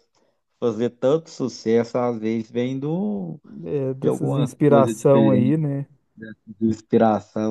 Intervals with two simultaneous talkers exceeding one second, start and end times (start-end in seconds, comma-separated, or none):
4.0-5.6